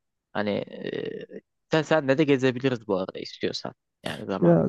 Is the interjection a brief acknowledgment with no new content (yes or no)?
no